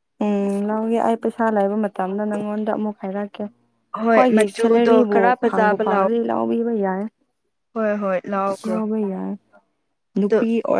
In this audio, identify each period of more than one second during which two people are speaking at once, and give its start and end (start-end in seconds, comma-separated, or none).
4.1-6.1